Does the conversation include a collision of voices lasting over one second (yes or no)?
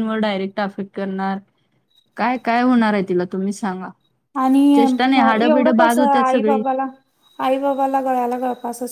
yes